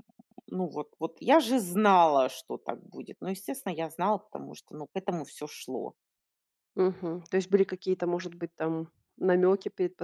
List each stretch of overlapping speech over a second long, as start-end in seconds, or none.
none